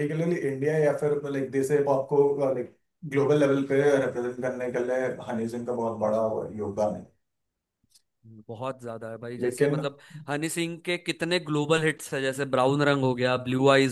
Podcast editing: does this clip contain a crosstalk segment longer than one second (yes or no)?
no